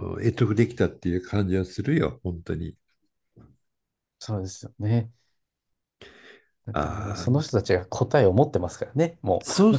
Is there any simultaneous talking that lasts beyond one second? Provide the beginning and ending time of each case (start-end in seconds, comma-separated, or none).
none